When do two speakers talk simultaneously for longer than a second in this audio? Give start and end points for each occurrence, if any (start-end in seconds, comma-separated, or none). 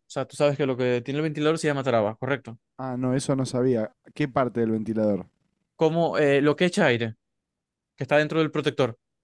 none